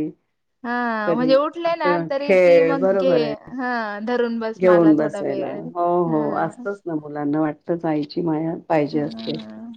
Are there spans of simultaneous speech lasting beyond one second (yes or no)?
yes